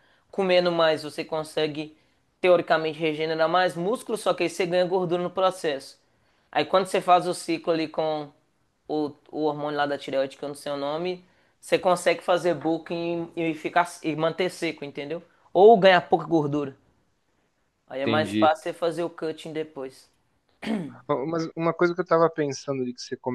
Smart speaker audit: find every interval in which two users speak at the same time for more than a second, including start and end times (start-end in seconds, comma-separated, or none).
none